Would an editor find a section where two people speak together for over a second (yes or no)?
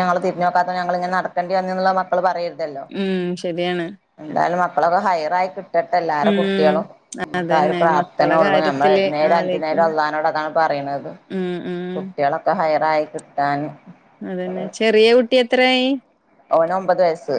yes